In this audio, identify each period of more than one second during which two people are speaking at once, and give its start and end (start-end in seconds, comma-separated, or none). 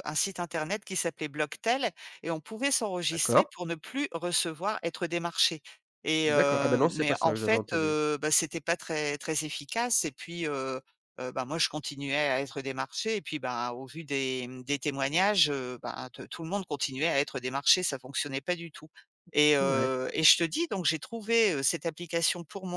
6.2-8.0